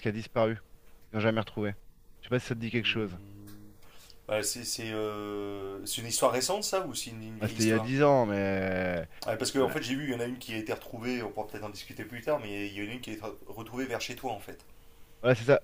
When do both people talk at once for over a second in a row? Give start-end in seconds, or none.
none